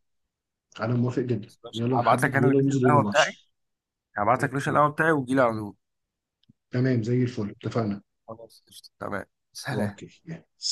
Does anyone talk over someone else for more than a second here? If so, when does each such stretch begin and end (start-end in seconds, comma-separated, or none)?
1.6-3.4